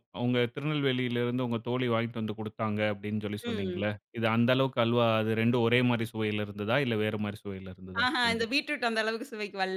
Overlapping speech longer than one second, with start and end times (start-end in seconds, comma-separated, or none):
none